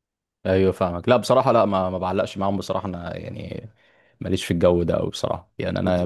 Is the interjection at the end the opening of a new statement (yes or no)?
no